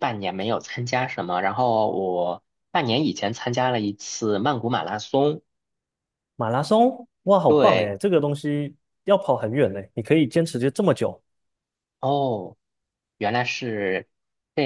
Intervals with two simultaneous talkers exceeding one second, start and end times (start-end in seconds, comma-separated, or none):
none